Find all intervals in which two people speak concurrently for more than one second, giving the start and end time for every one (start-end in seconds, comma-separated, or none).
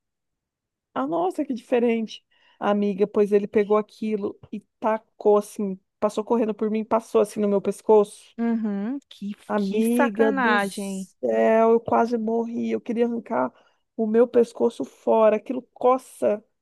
9.5-11.1